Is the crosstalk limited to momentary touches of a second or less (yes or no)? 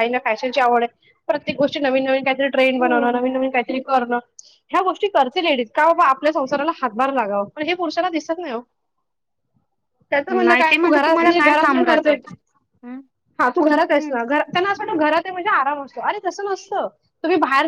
no